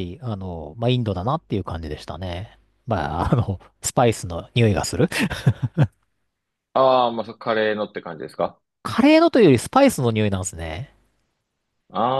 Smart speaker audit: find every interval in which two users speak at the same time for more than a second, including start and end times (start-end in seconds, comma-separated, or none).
none